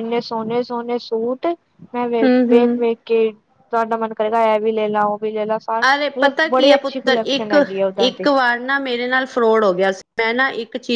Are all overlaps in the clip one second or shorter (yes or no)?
no